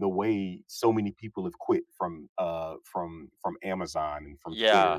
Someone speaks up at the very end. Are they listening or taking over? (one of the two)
taking over